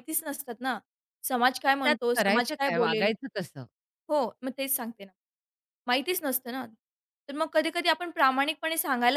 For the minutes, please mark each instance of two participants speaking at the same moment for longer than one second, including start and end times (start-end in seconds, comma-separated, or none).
1.7-3.1